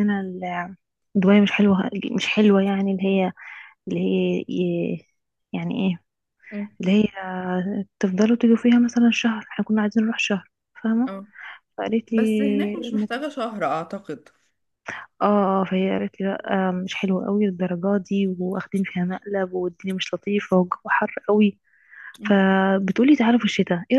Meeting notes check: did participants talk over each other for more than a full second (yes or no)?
no